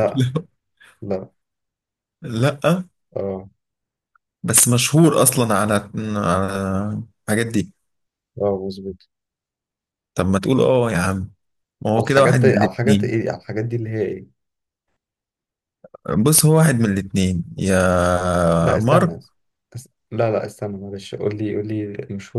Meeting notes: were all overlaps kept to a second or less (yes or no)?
no